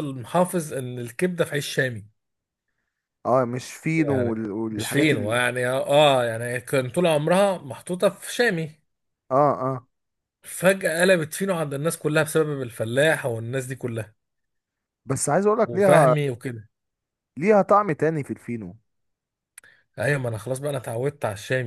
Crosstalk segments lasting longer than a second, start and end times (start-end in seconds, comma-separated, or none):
4.0-5.4